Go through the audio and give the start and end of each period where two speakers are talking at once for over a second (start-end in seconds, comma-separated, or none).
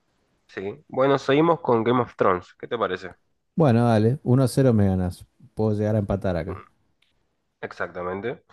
none